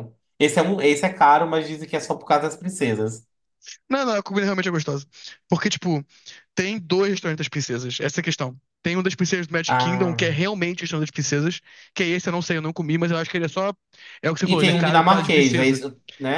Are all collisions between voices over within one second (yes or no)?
no